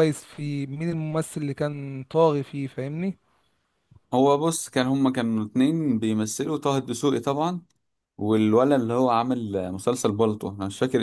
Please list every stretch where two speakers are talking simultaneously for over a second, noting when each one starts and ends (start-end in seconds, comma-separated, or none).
none